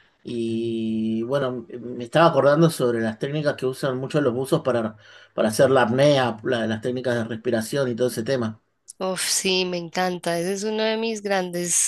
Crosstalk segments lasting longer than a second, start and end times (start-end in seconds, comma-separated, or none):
none